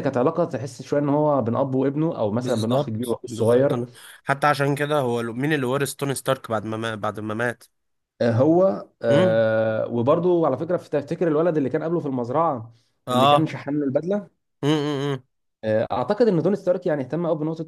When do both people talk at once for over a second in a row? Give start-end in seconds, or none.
2.4-3.8